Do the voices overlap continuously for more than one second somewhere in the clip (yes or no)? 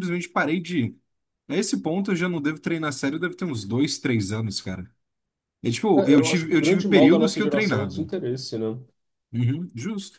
yes